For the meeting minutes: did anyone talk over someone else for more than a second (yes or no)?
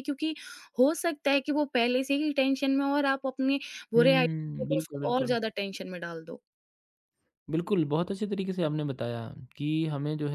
yes